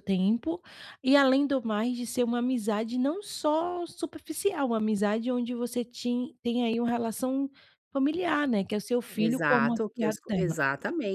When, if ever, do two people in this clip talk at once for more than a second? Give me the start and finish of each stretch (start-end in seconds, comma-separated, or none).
9.2-10.6